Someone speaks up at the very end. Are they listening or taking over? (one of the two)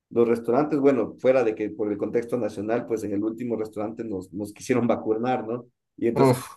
listening